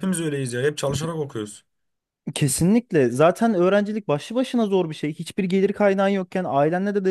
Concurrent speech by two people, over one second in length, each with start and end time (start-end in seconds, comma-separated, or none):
none